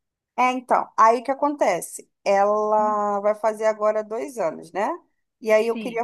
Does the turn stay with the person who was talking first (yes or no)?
yes